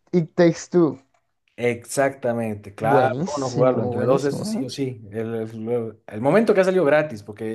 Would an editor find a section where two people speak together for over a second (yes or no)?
yes